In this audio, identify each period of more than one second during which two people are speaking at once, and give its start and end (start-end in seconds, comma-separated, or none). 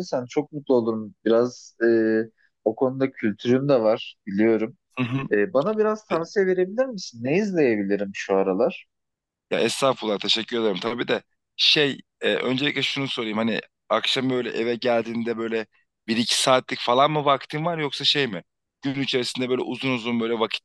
none